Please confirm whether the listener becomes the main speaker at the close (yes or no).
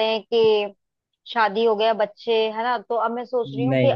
no